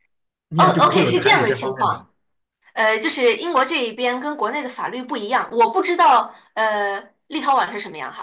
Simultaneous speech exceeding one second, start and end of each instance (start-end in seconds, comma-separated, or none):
0.6-2.0